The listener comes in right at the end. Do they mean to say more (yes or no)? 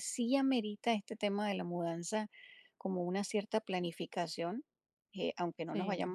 no